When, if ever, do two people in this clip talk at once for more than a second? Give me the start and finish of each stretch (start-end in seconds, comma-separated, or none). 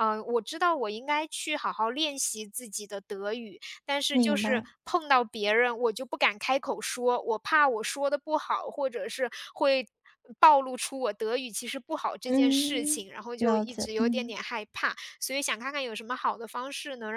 12.2-14.4